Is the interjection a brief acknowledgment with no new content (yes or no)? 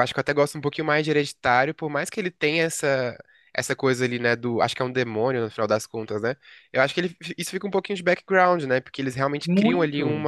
yes